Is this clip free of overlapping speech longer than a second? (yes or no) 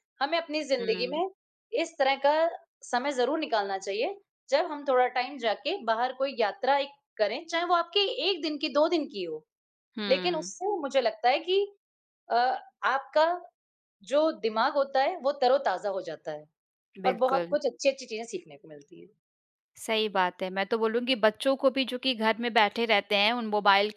yes